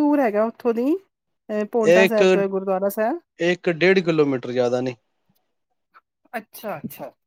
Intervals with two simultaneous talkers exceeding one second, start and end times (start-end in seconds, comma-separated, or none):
none